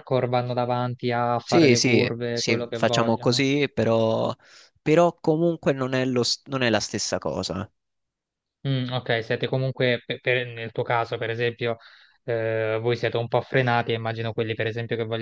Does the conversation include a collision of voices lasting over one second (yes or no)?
yes